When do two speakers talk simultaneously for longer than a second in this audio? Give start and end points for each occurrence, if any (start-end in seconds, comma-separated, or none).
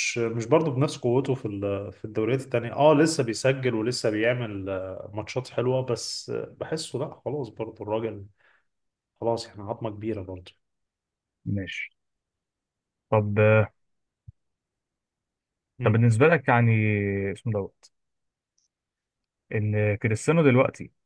none